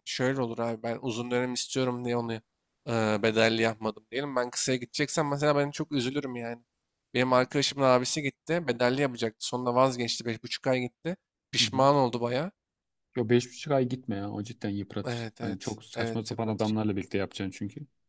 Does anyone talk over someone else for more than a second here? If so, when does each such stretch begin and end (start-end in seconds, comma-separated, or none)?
15.0-16.7